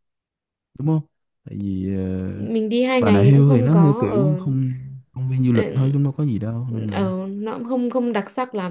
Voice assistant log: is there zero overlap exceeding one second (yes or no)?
no